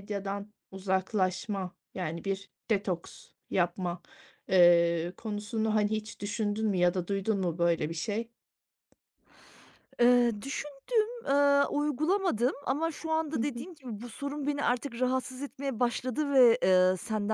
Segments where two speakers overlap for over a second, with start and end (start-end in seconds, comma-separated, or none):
none